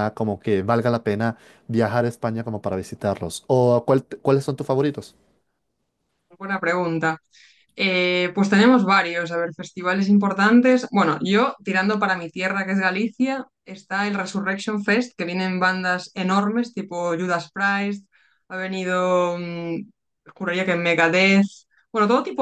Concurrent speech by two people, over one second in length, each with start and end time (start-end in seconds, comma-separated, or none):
none